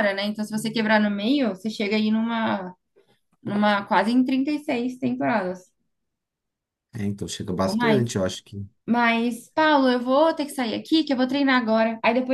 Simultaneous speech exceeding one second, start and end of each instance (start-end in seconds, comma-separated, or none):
none